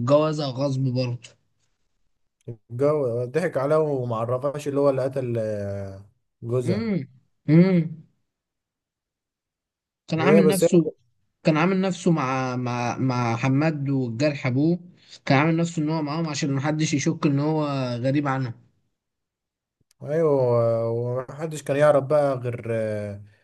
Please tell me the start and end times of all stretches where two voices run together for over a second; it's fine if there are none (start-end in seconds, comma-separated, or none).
none